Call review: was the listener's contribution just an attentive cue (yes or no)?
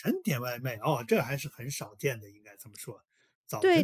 no